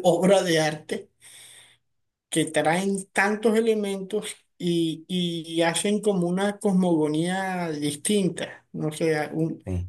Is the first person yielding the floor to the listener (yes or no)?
no